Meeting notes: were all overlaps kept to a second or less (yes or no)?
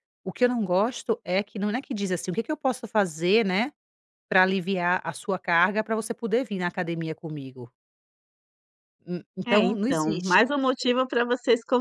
no